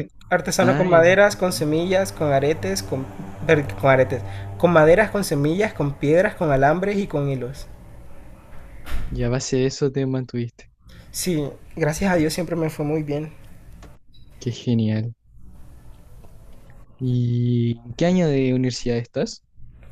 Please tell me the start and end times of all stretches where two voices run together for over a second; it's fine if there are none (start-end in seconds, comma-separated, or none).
0.6-1.8